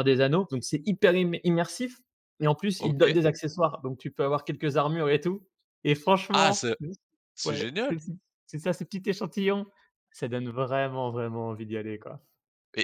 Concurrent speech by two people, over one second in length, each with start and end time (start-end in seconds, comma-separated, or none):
none